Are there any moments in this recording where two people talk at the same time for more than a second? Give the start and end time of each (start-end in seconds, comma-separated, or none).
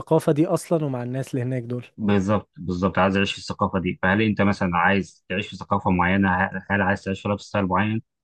none